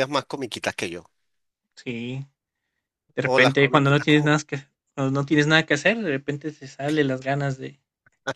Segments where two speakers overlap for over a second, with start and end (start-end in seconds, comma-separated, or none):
3.2-4.4